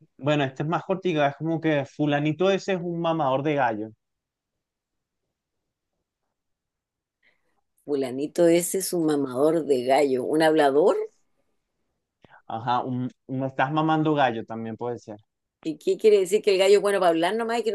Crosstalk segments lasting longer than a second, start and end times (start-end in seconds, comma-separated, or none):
none